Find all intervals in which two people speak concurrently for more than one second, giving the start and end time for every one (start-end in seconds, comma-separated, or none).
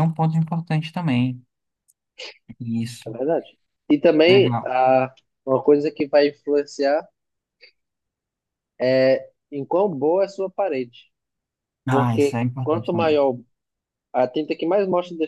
11.9-13.2